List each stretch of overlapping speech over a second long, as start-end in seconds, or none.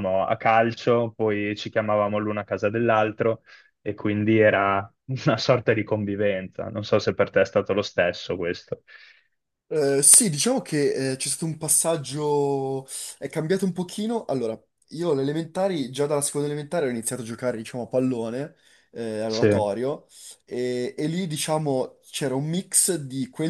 none